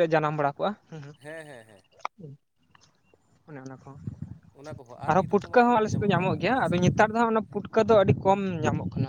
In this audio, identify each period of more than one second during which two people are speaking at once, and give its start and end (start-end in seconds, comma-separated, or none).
5.1-6.9